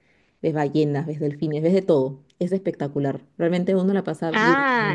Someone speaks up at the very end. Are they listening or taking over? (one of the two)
taking over